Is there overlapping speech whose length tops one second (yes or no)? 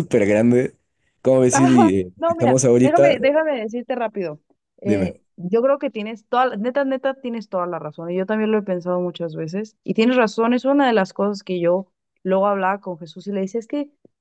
yes